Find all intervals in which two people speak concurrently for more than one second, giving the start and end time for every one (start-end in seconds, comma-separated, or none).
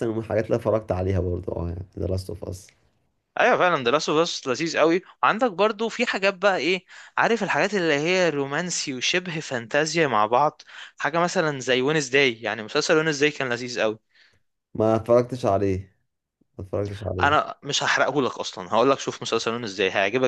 none